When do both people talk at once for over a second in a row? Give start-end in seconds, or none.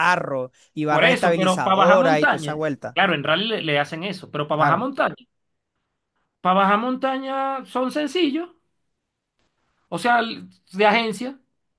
0.9-3.0